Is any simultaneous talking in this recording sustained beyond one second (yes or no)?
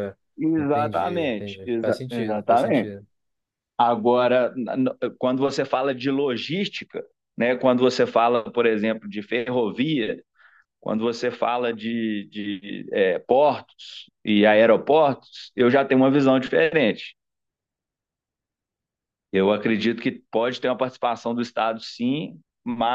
yes